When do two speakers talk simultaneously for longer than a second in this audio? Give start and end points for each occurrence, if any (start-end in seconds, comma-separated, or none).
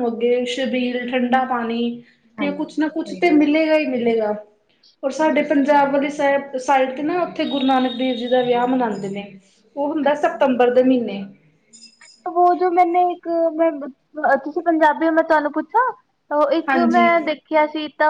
none